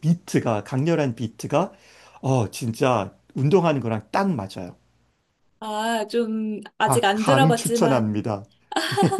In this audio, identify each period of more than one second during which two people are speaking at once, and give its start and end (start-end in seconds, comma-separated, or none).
6.9-8.2